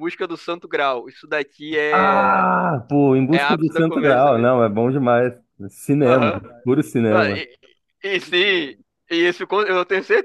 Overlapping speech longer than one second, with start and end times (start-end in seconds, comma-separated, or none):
3.3-4.5